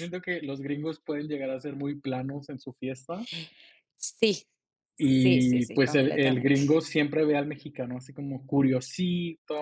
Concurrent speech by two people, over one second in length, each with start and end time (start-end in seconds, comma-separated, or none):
5.0-6.6